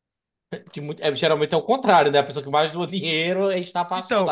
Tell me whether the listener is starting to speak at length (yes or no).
yes